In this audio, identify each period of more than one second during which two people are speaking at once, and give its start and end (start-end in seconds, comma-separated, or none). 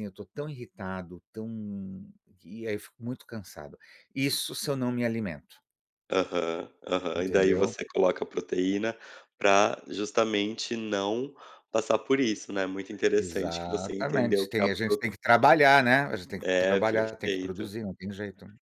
13.2-15.0, 16.4-17.7